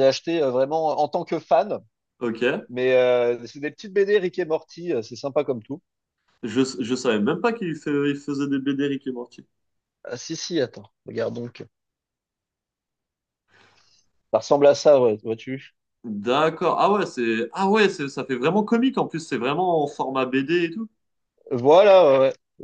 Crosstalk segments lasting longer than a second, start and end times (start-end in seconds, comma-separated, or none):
none